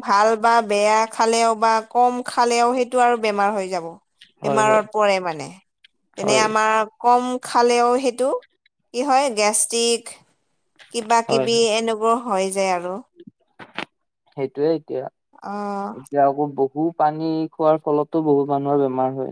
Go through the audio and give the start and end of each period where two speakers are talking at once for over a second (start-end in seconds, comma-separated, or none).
none